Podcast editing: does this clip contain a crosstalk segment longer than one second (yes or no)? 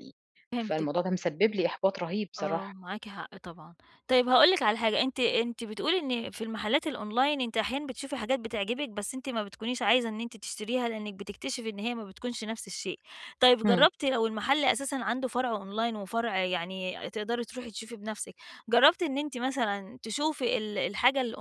no